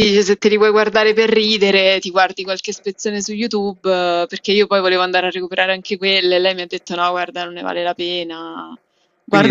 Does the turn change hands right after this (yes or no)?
yes